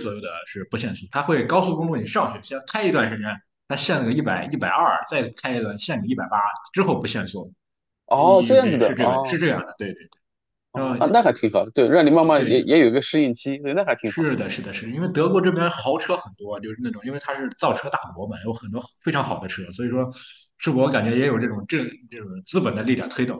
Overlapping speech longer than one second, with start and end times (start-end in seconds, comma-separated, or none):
8.2-9.4